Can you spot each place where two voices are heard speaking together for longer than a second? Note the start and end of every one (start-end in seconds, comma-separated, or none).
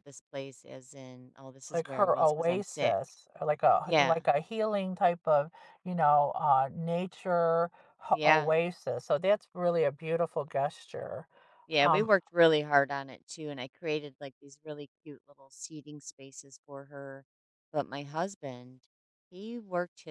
1.7-3.0